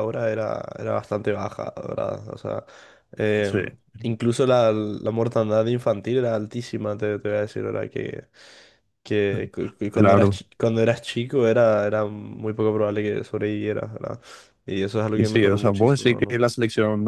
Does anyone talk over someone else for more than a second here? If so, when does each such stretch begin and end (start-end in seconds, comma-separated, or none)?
15.1-16.4